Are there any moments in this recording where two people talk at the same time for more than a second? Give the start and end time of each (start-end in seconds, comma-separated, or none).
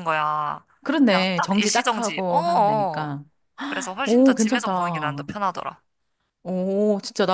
1.1-3.1, 4.0-5.3